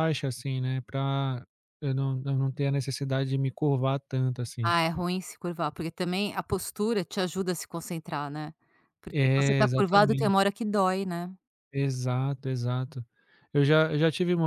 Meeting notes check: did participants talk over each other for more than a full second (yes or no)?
yes